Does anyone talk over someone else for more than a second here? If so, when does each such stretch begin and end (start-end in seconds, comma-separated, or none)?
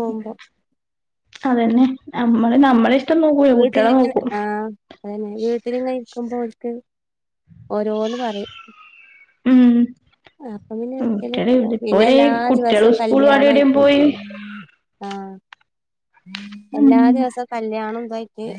11.0-13.8